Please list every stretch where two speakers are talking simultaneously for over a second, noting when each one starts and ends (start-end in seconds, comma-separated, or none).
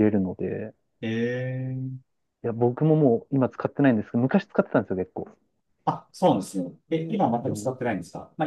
none